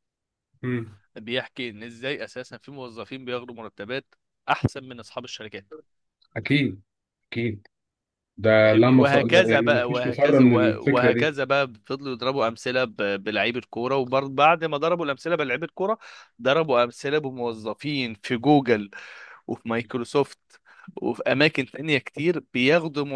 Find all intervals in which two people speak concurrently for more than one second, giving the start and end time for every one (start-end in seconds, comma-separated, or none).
8.6-11.4